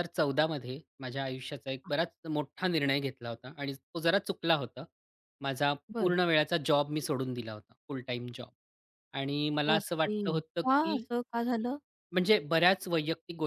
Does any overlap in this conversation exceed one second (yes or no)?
yes